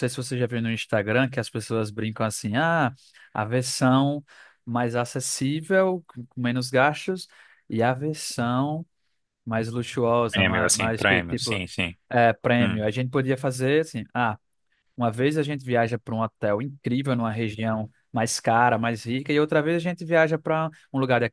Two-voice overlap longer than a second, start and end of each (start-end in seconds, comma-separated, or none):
10.3-11.6